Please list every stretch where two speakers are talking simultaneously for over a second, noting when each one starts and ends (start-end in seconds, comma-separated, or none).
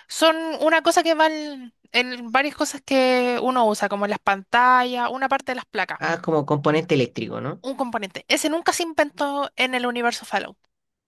none